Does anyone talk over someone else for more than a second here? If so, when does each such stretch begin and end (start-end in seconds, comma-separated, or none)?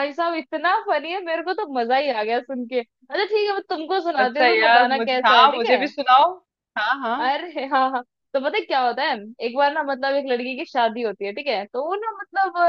4.2-5.8